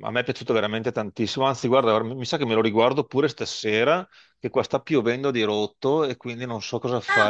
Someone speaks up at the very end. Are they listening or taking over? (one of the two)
taking over